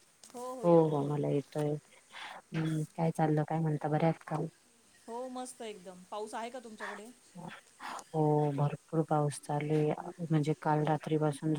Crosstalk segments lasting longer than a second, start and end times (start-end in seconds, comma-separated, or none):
none